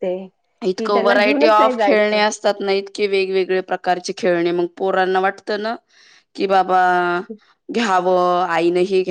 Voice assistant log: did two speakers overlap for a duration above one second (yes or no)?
yes